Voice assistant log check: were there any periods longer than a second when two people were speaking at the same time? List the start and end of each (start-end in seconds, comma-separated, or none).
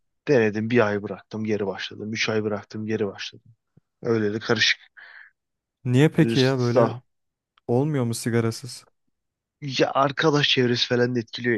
none